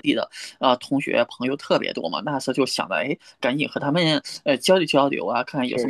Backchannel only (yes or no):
yes